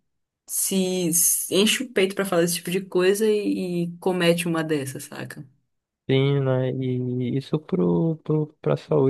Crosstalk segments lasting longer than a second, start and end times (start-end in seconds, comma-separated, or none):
none